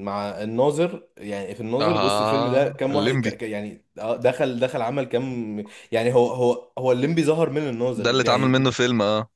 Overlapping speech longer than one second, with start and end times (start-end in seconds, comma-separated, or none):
1.8-3.4